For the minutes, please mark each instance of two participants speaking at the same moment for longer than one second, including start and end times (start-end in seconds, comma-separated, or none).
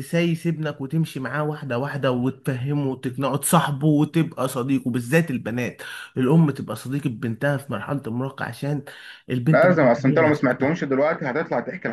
9.5-10.7